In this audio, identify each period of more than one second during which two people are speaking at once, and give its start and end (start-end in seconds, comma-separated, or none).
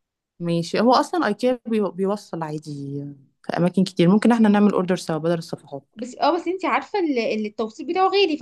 none